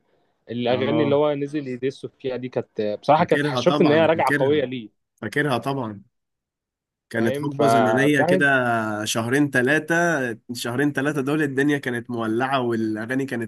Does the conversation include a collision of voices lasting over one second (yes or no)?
yes